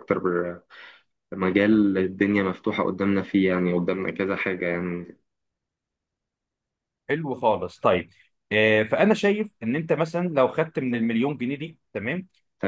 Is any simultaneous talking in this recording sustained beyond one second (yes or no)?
no